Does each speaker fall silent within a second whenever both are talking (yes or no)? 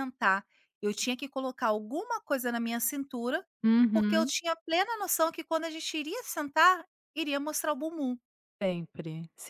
yes